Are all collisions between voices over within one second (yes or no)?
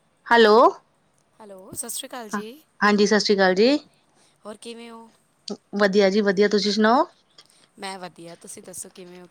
yes